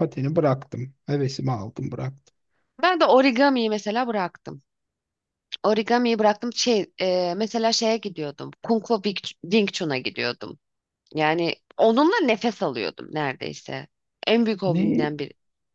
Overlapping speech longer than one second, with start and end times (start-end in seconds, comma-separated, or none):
none